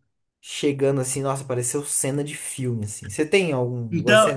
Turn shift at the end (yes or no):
yes